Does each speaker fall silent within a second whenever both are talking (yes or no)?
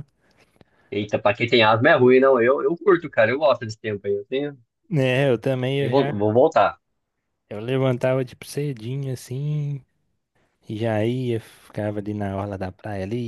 yes